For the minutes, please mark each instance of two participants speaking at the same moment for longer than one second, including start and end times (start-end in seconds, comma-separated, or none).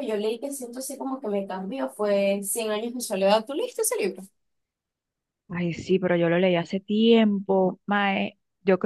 none